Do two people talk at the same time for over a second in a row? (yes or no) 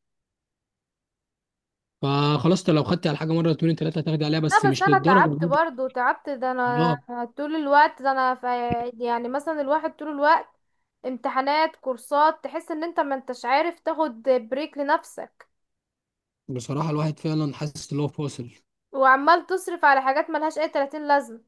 yes